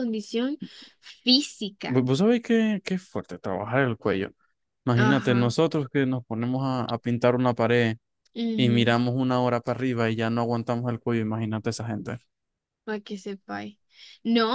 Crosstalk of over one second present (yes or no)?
no